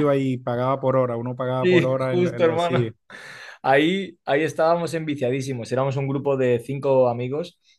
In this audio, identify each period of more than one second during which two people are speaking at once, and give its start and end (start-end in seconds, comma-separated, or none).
1.6-2.8